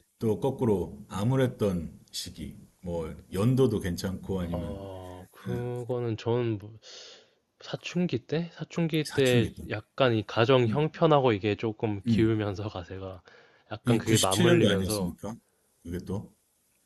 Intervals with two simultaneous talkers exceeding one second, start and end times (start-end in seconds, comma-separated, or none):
13.8-15.2